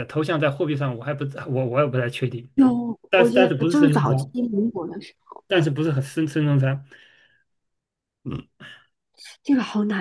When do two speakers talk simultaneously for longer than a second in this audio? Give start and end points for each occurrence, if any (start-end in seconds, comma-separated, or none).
3.1-4.3